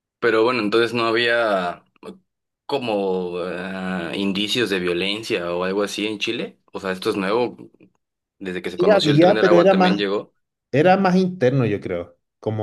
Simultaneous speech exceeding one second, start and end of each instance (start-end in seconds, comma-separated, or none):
8.8-10.1